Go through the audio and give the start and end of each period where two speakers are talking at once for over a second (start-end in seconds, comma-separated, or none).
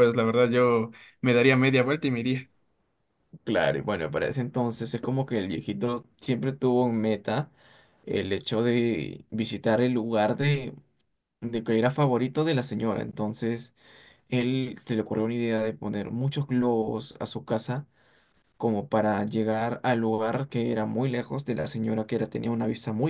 none